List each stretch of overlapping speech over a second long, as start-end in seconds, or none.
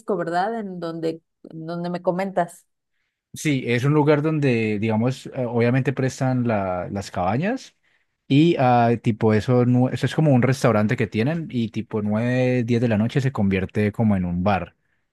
none